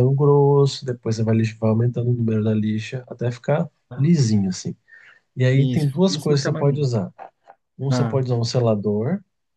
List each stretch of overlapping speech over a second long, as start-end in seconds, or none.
5.5-6.9